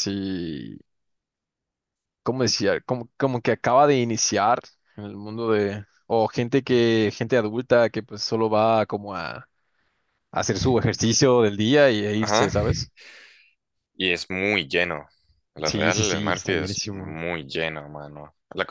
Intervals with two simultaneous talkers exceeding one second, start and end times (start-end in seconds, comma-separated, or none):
15.7-17.2